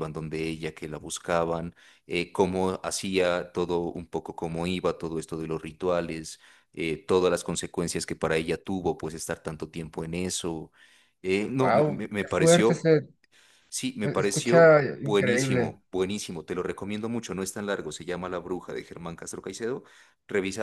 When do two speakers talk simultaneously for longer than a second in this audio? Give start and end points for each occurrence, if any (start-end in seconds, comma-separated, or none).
11.6-12.9, 14.0-15.7